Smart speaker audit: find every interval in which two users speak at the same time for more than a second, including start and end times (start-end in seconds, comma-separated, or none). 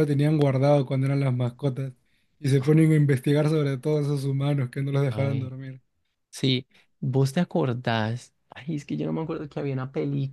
none